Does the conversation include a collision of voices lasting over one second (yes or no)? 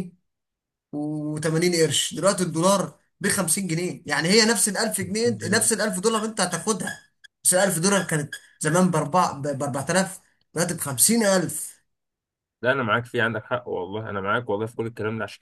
no